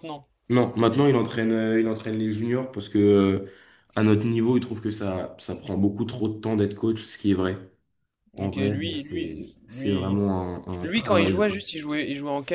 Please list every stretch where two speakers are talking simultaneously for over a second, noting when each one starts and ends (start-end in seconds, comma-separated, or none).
8.4-10.2